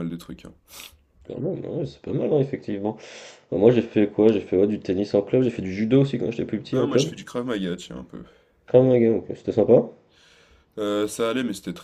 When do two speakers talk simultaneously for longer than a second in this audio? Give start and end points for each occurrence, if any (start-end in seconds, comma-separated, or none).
none